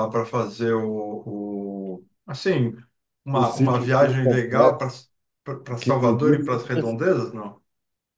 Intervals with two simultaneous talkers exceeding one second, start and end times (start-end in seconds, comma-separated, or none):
3.3-4.8, 5.8-7.1